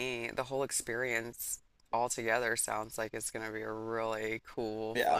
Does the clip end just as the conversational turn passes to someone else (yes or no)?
yes